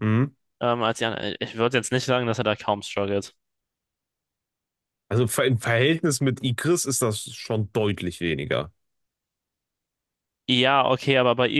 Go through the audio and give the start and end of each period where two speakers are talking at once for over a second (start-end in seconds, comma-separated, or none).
none